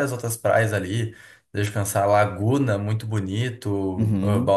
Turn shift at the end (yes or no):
no